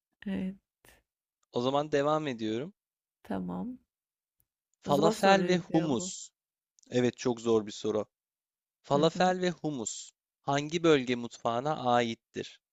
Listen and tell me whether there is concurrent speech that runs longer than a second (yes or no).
yes